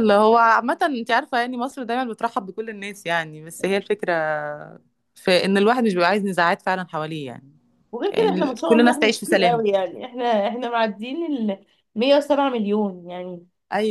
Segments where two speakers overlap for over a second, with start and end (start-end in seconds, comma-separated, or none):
8.1-9.7